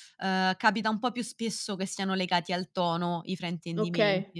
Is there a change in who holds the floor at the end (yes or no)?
yes